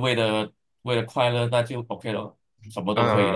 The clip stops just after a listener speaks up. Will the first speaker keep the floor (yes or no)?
no